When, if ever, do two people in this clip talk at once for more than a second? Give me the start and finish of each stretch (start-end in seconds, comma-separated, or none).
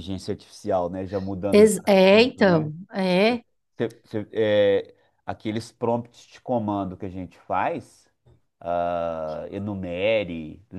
1.5-2.7